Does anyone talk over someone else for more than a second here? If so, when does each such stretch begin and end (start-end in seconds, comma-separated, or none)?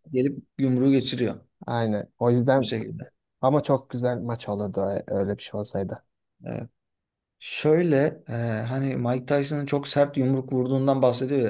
none